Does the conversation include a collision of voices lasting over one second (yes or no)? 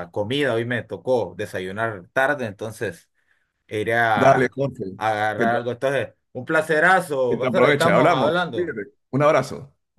yes